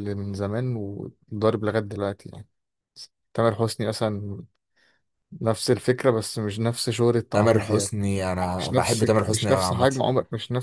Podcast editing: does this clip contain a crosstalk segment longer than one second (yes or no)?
yes